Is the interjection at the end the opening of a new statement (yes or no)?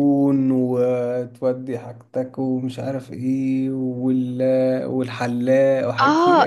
yes